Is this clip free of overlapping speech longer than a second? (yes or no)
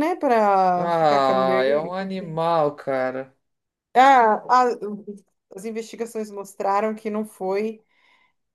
no